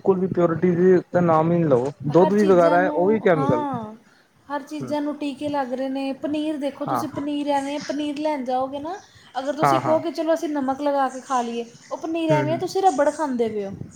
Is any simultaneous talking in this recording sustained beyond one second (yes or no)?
yes